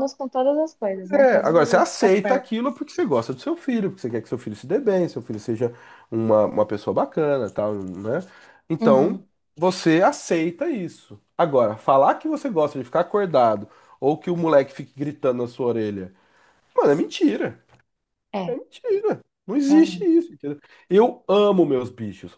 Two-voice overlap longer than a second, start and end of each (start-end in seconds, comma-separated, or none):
1.1-2.5